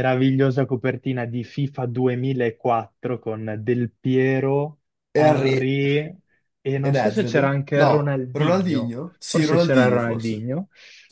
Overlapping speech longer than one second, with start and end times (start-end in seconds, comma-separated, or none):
6.8-10.5